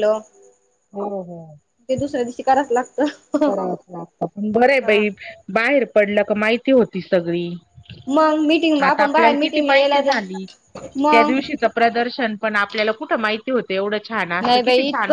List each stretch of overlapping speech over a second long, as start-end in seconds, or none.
8.8-10.4